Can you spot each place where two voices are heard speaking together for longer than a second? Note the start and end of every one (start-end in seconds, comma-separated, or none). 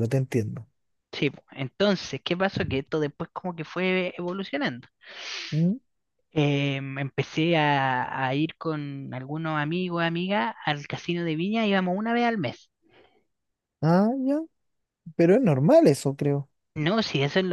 none